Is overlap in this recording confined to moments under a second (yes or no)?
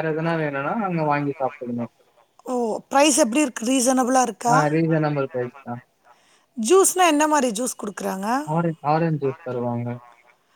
yes